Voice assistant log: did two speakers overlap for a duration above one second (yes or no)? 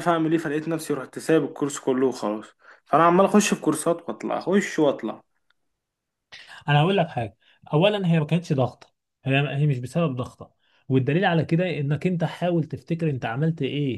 no